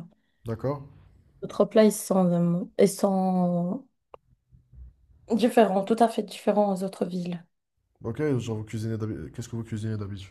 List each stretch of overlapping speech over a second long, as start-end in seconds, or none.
none